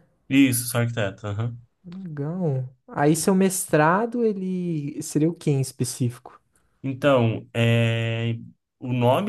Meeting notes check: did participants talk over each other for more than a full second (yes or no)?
no